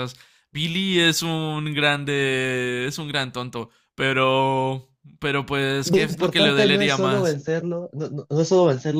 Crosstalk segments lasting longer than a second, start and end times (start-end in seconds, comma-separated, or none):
5.8-7.4